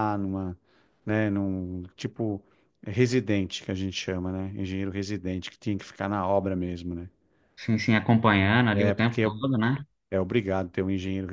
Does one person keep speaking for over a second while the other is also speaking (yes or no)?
no